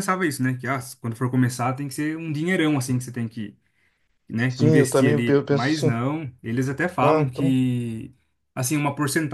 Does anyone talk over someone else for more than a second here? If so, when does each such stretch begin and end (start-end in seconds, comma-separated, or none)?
4.5-6.0